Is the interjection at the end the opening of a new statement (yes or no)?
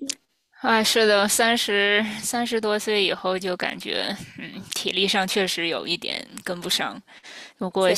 no